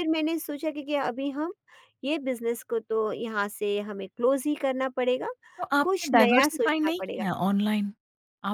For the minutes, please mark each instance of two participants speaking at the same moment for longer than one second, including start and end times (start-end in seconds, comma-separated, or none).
5.8-7.2